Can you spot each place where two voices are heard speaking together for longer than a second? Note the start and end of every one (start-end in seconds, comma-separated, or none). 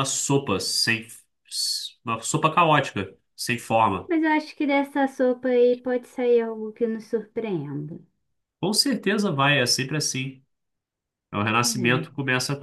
none